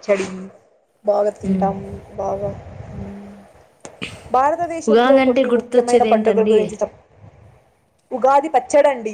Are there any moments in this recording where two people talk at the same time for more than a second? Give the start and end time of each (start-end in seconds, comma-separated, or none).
4.9-6.6